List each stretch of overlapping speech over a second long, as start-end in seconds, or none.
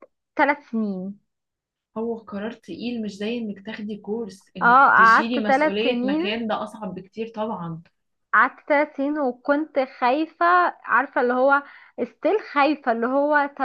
4.6-6.2